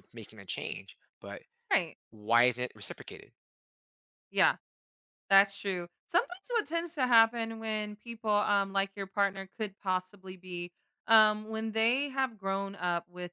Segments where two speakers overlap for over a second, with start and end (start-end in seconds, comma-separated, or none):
none